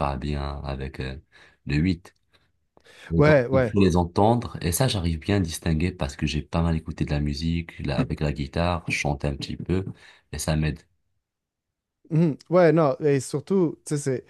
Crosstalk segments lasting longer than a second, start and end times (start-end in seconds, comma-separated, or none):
none